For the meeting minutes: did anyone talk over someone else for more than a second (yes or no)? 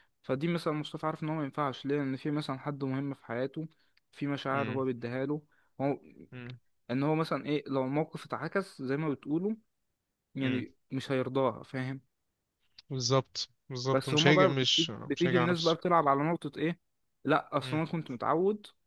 yes